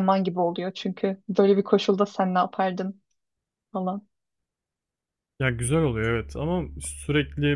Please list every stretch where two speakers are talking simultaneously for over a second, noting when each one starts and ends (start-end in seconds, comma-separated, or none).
none